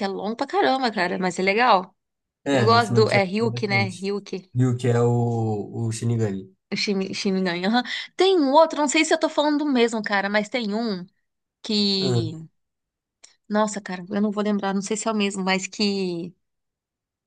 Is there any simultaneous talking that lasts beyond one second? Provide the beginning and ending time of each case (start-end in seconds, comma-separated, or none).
2.5-4.0